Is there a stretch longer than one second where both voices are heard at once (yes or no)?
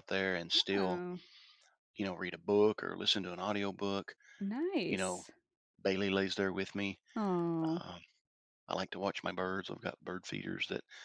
no